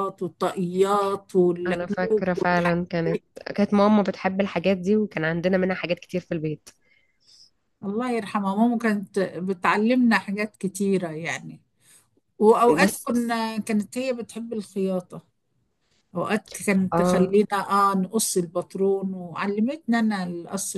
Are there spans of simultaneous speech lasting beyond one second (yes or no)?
yes